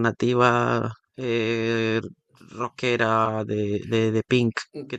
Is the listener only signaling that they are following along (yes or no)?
no